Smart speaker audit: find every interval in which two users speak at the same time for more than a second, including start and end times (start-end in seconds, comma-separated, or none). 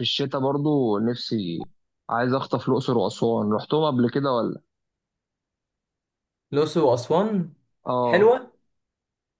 none